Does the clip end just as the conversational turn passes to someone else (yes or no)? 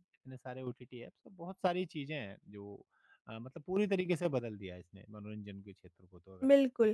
yes